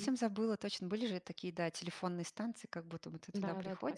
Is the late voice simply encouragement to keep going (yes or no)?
no